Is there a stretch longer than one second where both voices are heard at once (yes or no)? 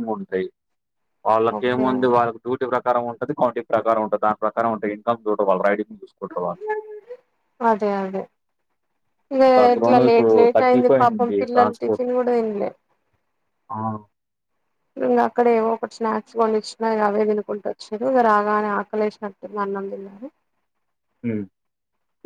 yes